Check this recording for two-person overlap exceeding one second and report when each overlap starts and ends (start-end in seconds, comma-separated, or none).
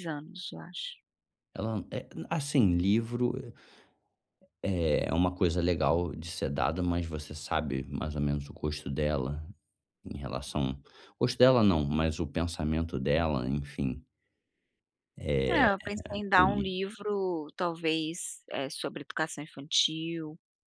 none